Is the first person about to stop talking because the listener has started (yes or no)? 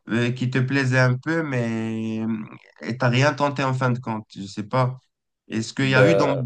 no